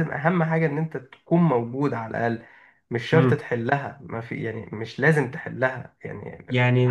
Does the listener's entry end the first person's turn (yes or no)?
yes